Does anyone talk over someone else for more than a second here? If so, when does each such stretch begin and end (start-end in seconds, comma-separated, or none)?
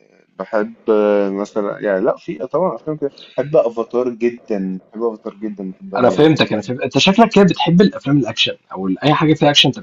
none